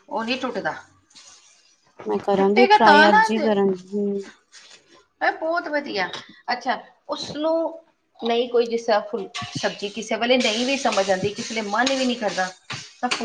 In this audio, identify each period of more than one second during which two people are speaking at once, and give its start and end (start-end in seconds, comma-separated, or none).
2.4-3.7